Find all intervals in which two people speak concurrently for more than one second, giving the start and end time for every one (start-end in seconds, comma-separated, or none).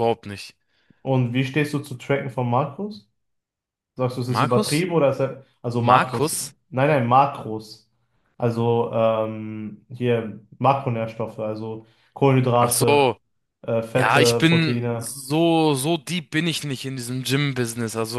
13.9-15.2